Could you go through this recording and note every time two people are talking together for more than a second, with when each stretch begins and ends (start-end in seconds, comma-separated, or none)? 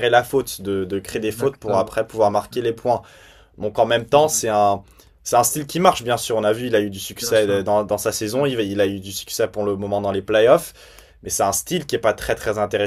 1.1-2.8